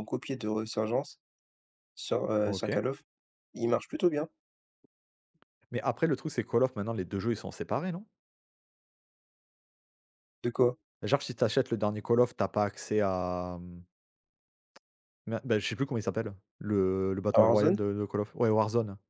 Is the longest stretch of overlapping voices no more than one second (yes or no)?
yes